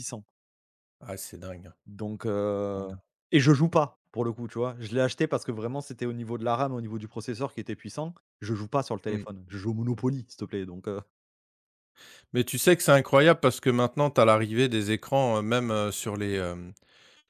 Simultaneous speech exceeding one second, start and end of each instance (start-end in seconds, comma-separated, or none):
none